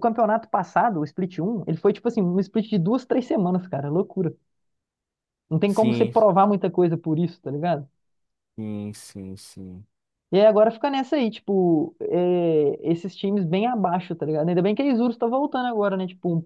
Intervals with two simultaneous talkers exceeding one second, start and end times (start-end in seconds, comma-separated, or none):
none